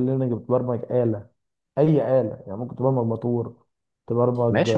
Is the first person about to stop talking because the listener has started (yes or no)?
yes